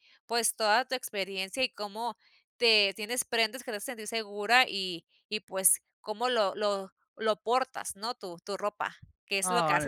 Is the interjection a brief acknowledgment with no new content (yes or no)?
no